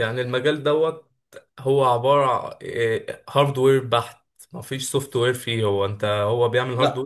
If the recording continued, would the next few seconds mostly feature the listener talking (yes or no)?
no